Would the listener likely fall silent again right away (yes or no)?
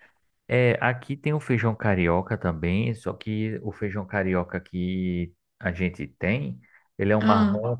yes